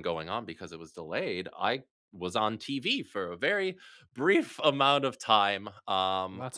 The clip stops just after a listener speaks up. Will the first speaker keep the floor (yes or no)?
yes